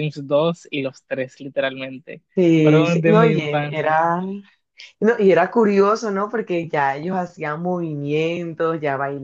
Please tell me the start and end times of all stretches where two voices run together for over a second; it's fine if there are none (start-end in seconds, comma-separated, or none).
2.6-4.0